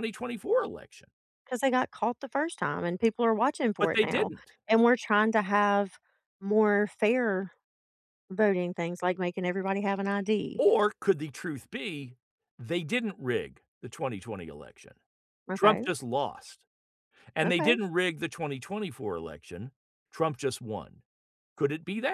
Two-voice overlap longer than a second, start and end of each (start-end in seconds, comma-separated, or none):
none